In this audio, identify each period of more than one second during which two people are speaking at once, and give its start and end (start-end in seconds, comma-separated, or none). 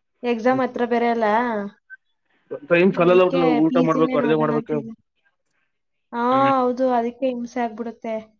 3.0-4.8